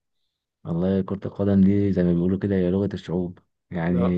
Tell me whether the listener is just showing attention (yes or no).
yes